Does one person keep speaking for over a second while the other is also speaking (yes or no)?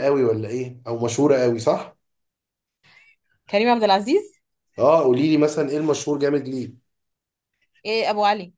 no